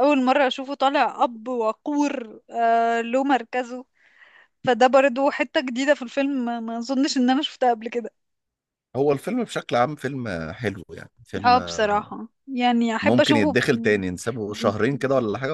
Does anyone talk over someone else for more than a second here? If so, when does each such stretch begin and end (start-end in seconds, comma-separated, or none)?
13.0-14.7